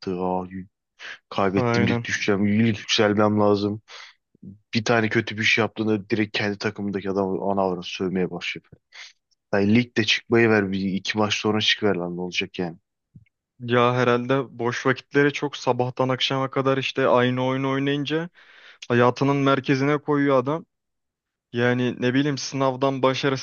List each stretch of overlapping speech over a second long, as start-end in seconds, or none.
none